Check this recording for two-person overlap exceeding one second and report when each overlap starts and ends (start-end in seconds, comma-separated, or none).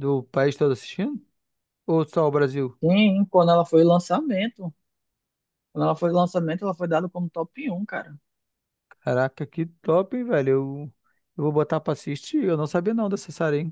none